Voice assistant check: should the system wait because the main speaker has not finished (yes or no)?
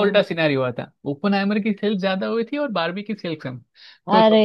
yes